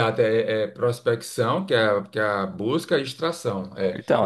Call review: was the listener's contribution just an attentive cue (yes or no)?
no